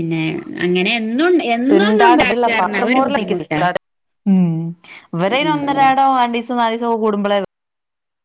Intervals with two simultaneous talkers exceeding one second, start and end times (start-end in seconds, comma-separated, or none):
1.8-3.6